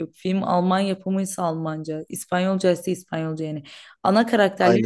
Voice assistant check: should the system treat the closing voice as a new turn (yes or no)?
no